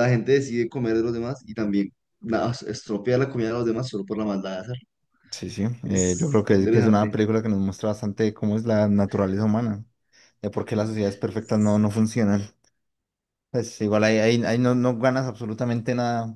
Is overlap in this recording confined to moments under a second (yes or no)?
no